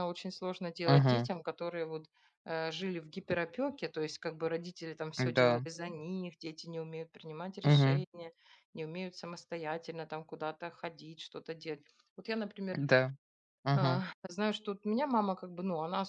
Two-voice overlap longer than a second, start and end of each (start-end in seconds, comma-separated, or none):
none